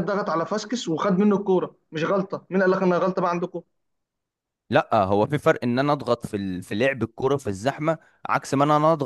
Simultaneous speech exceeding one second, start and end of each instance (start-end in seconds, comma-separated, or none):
none